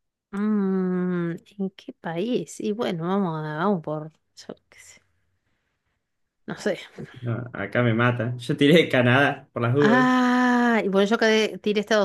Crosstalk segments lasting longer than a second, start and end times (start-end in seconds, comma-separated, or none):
none